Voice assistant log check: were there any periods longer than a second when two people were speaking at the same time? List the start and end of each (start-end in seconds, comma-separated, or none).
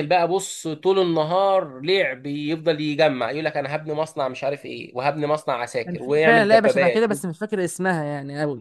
5.8-7.0